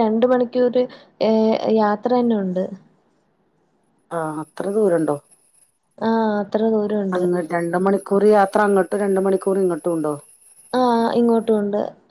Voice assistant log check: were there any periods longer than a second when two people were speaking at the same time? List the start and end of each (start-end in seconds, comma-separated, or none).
none